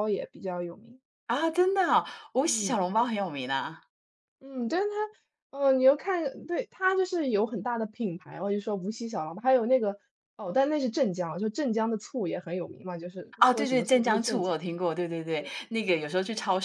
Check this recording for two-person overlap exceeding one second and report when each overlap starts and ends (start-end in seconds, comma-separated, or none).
13.4-14.7